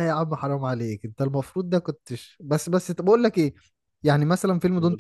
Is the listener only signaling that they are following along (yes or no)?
yes